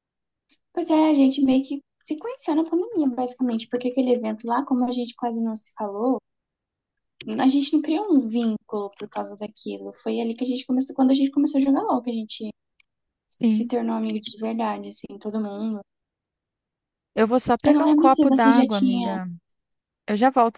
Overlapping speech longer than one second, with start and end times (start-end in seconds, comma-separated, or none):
17.6-19.2